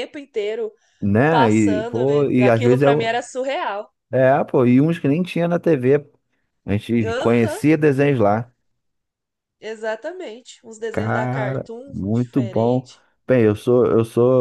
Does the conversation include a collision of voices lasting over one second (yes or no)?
yes